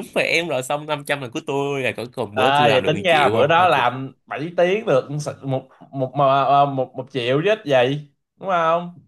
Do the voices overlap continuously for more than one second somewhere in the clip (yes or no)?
yes